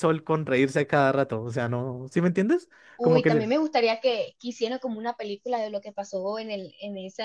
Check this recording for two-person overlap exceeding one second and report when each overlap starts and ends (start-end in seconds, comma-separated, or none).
none